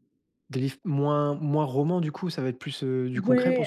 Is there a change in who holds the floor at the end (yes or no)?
yes